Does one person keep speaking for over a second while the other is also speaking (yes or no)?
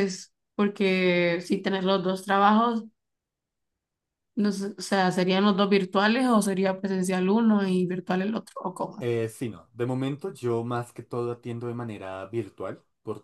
no